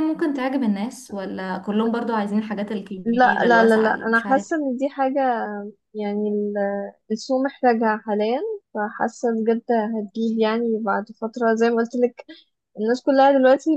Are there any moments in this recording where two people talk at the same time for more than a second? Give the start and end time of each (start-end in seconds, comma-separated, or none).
3.0-4.5